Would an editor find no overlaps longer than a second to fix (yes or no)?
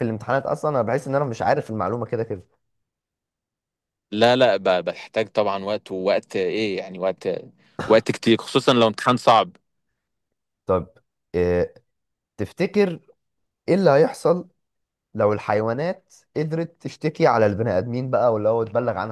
yes